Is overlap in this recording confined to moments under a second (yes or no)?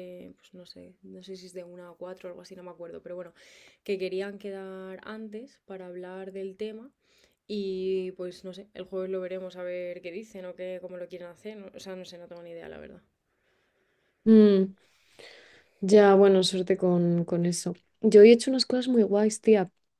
yes